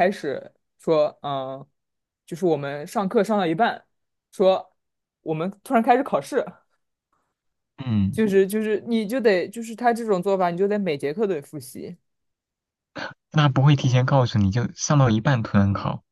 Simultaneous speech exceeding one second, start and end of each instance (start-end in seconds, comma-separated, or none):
none